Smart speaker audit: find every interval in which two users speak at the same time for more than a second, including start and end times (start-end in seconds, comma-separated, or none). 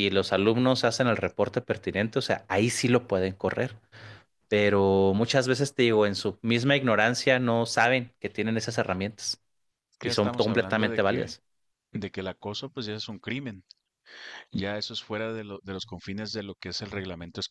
10.0-11.3